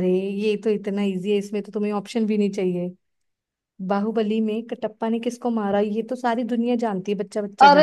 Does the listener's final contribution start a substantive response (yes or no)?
yes